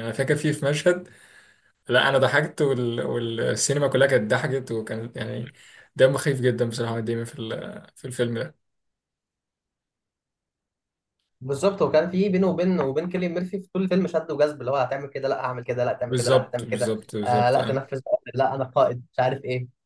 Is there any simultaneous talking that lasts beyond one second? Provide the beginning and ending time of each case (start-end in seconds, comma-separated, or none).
16.0-17.8